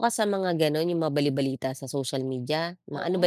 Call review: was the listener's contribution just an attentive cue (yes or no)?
yes